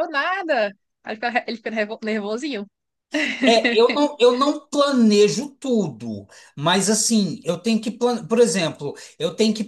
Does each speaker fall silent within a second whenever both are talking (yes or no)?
yes